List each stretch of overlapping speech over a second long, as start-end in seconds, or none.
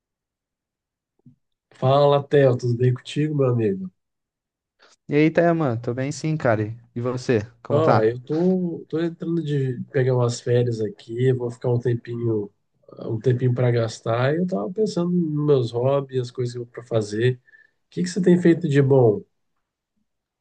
none